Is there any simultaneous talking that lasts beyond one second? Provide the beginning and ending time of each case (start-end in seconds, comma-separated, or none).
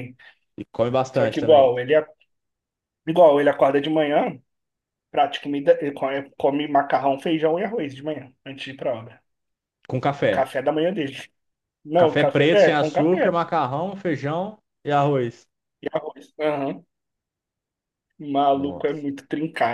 12.0-13.3